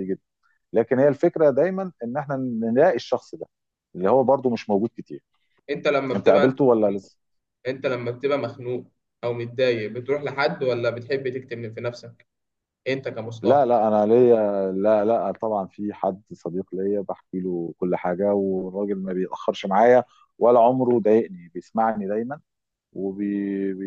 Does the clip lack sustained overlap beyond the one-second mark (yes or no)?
yes